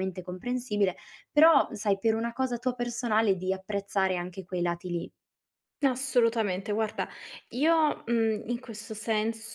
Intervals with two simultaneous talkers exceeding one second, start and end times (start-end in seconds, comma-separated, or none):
none